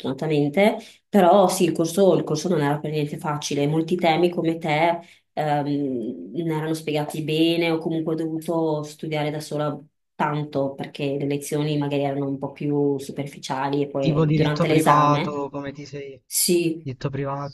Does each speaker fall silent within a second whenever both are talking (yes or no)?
no